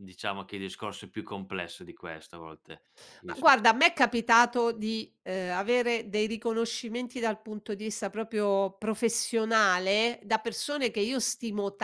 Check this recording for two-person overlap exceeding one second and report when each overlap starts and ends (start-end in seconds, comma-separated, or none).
none